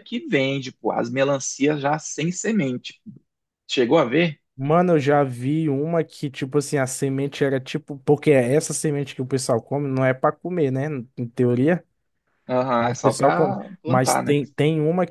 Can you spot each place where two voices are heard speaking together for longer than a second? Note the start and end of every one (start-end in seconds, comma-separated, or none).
12.8-14.4